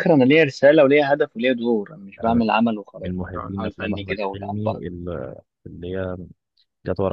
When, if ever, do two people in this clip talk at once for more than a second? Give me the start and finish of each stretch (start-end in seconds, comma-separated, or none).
3.0-4.9